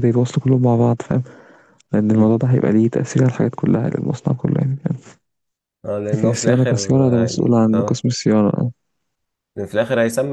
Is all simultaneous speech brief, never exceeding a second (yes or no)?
no